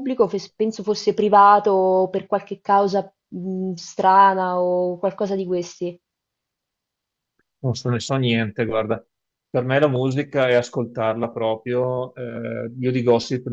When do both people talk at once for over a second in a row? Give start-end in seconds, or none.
none